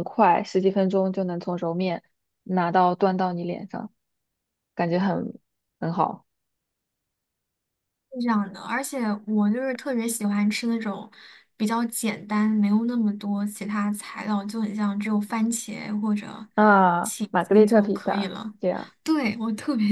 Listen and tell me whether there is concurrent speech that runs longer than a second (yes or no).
yes